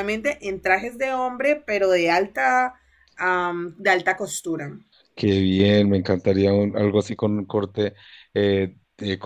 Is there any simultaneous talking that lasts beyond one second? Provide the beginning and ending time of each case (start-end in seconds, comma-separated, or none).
none